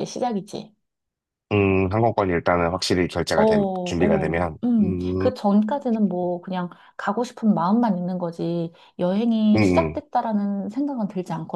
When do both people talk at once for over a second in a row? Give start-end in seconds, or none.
3.3-5.3